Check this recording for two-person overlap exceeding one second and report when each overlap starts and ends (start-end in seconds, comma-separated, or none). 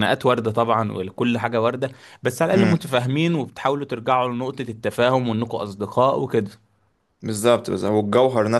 none